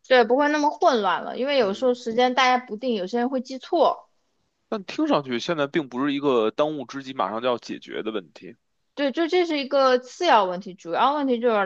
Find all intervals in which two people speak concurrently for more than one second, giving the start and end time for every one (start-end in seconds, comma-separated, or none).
none